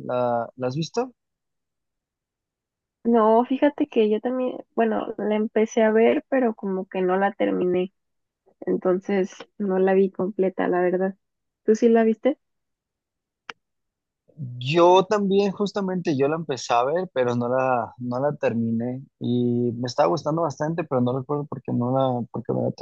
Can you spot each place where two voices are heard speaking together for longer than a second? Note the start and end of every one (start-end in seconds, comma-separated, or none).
none